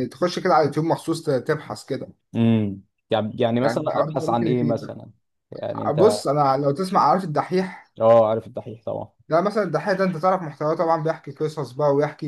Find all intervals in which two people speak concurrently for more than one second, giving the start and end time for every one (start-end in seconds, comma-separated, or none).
3.6-5.0